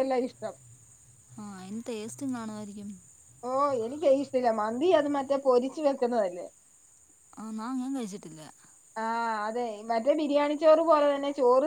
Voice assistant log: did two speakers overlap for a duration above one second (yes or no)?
no